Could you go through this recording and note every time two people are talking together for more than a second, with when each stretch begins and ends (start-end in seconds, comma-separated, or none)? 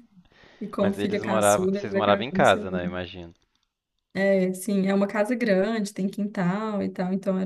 0.8-2.9